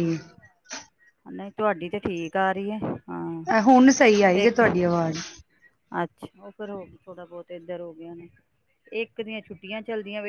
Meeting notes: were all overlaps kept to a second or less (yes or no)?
yes